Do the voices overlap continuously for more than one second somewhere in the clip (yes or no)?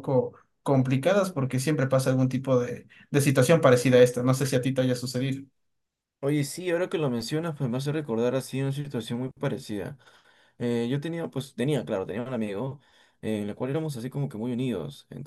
no